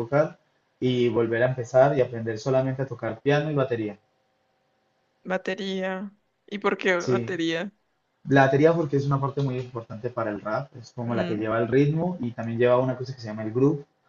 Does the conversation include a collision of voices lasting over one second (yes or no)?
no